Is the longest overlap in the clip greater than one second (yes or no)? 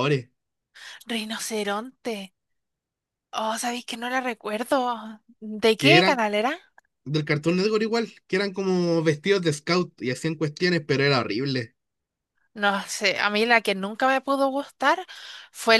no